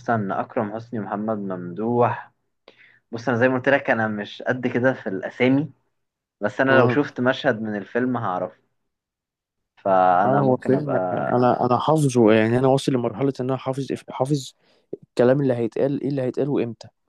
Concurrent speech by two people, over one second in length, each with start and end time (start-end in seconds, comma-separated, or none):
10.2-11.5